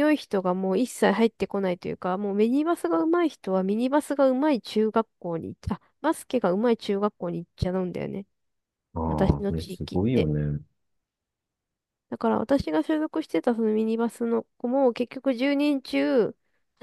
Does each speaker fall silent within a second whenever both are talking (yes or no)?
no